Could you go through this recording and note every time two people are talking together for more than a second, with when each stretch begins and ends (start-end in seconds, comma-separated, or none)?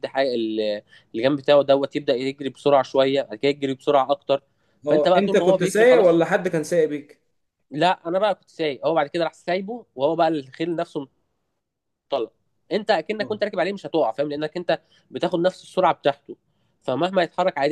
4.9-6.2